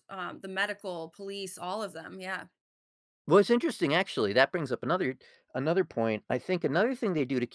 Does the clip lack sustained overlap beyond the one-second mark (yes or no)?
yes